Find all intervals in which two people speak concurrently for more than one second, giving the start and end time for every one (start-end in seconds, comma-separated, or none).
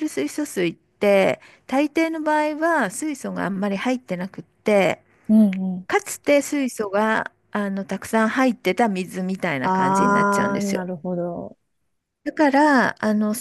9.6-10.8